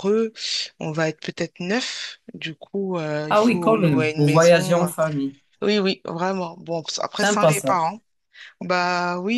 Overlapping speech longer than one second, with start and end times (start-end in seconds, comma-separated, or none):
3.3-4.9